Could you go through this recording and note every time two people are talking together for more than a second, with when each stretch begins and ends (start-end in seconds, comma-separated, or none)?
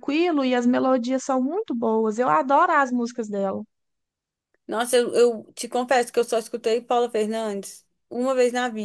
none